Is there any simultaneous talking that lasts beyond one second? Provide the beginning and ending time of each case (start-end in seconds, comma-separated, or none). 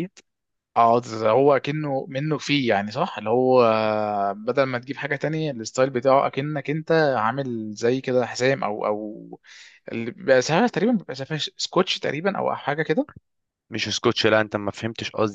none